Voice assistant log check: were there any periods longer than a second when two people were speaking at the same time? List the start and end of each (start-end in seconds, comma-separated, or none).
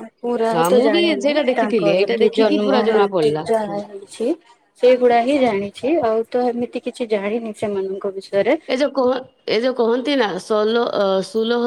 0.5-3.4